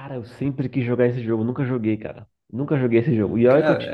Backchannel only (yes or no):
yes